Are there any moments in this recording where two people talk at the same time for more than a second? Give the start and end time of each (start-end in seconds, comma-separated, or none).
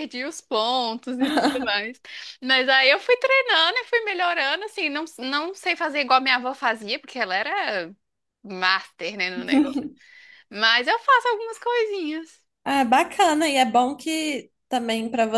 none